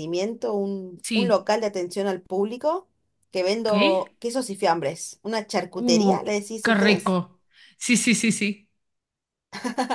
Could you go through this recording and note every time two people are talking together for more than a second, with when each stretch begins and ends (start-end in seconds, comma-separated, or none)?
5.7-7.2